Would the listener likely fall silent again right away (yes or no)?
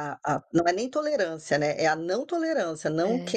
yes